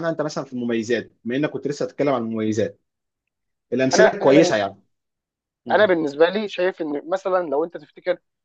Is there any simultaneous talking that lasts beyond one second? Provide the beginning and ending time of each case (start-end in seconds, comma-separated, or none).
none